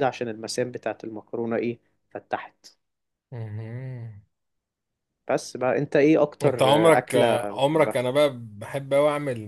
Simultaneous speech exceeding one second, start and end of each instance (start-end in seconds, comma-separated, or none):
6.4-8.0